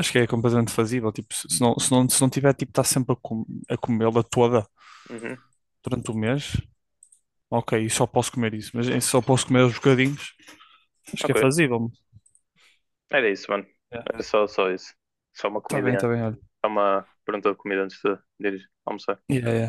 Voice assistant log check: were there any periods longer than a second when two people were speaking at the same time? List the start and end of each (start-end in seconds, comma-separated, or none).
none